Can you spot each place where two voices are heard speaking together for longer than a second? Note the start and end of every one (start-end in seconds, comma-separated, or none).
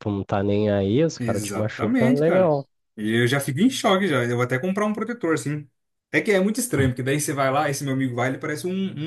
1.2-2.5